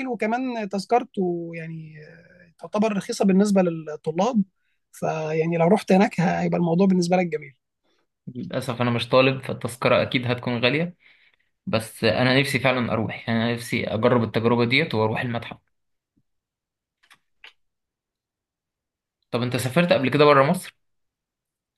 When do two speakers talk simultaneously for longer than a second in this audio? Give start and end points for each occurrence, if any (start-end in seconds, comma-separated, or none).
none